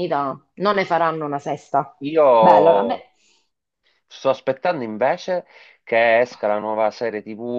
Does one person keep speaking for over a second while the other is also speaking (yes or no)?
no